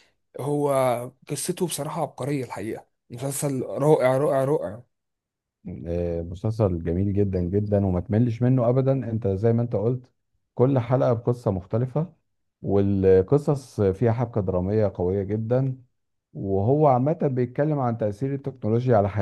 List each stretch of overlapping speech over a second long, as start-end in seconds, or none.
none